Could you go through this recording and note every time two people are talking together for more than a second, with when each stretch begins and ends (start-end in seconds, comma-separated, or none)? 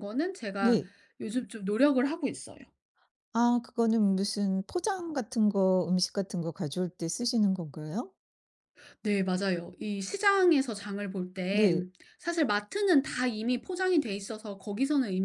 none